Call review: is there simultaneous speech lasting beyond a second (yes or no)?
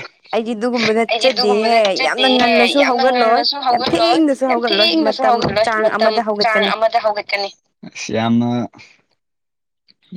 yes